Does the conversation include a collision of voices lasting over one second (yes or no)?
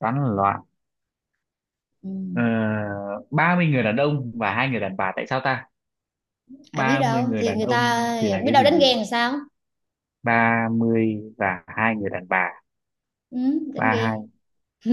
yes